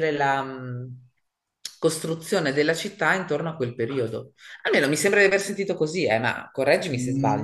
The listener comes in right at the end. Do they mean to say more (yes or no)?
yes